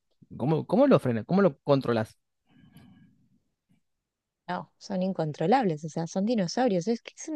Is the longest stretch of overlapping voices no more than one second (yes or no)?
yes